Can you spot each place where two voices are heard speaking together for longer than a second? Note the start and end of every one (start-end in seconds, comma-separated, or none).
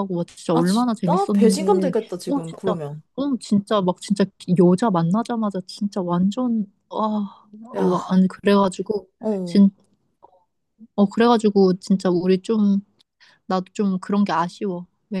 0.5-2.7